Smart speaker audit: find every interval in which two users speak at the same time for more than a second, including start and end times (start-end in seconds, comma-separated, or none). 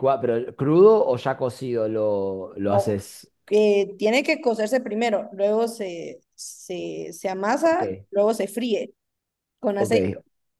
none